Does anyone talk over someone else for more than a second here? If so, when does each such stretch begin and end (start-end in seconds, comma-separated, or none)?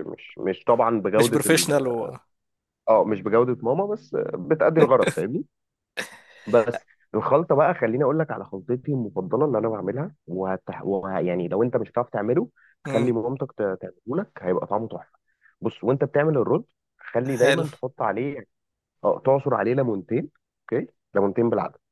none